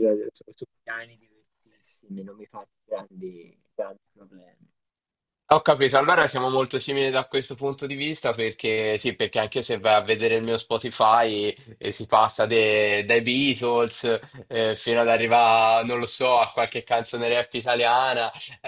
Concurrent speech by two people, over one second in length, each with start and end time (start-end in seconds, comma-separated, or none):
none